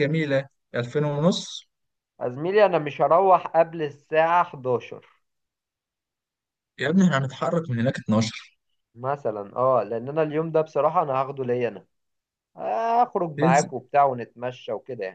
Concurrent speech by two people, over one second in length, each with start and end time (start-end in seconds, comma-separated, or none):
none